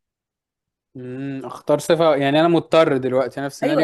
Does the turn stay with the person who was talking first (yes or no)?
no